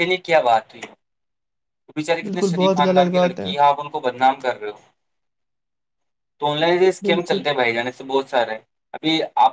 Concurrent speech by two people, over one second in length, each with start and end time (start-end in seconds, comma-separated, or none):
2.2-3.5